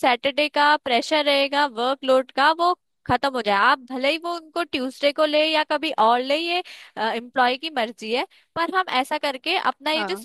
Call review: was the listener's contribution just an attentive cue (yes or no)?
yes